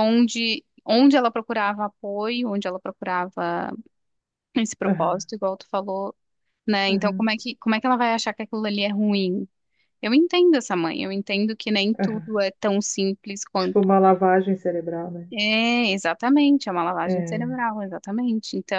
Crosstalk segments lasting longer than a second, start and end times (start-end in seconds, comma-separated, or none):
none